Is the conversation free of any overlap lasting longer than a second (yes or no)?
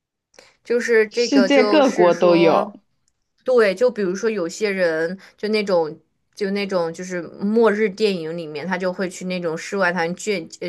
no